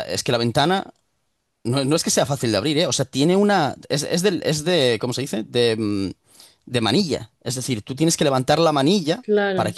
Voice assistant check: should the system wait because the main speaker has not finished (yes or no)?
yes